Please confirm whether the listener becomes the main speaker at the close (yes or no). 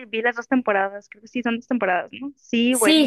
yes